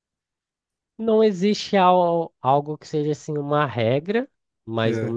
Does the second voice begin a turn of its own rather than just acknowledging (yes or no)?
no